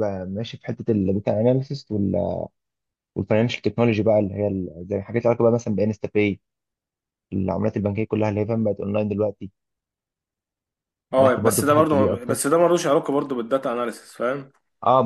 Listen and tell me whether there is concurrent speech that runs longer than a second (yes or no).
yes